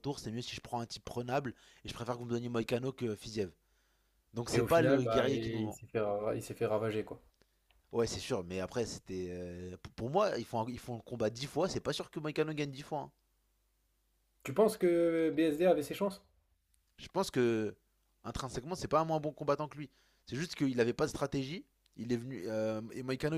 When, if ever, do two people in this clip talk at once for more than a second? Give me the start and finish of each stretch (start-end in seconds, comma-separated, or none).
4.5-5.8